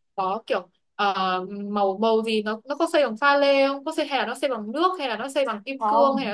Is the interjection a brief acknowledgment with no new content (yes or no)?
no